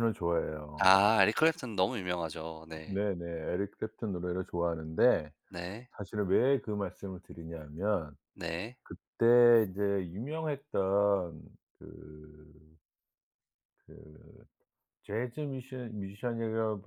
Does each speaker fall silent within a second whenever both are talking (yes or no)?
yes